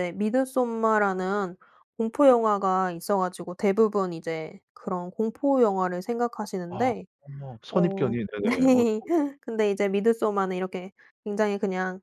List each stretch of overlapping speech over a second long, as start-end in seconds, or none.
7.7-9.0